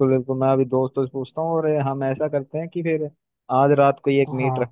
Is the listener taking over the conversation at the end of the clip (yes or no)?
no